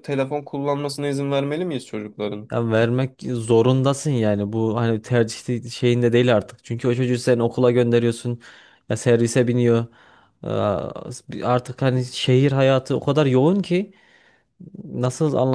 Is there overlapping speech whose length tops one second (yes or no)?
no